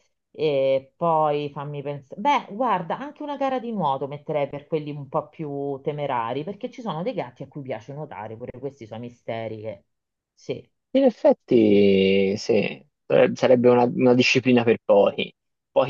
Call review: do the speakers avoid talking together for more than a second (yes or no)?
yes